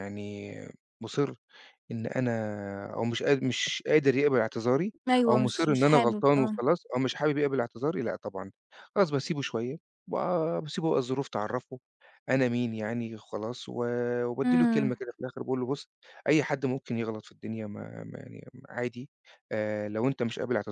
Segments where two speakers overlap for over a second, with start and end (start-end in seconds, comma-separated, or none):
5.1-6.7